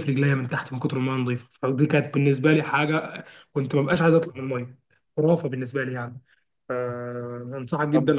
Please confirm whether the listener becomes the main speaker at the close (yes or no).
yes